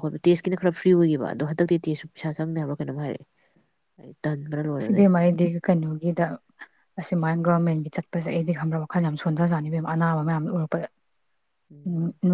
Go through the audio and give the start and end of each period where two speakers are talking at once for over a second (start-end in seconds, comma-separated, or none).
none